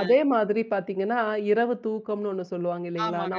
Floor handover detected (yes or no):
no